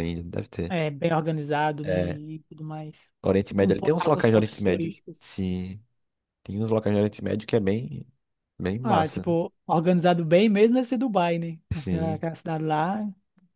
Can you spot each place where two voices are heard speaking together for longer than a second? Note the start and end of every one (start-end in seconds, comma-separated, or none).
3.5-5.3